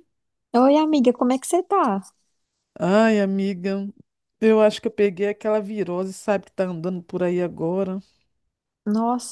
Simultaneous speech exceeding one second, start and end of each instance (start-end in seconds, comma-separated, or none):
none